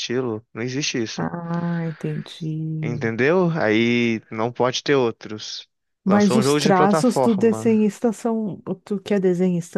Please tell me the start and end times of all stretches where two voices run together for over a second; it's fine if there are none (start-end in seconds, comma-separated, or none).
6.0-7.7